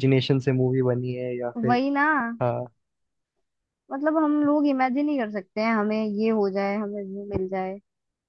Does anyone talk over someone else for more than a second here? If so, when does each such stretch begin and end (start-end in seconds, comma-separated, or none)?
none